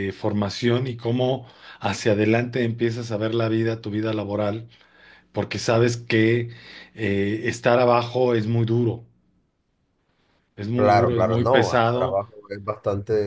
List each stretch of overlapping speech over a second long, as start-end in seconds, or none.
10.7-12.2